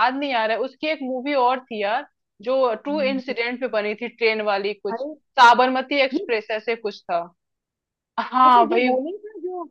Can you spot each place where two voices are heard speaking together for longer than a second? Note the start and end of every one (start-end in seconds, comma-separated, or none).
none